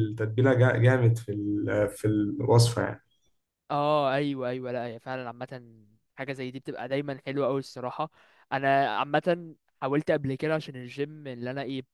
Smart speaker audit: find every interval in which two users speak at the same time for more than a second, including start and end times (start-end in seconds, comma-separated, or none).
none